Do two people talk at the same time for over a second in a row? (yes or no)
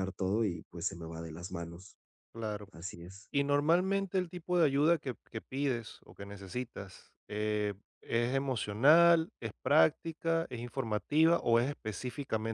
no